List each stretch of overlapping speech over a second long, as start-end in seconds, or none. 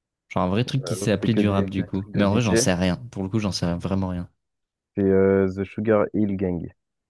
0.8-2.6